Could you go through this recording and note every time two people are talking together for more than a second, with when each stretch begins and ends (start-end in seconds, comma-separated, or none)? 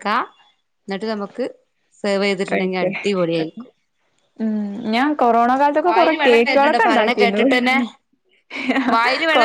5.8-7.4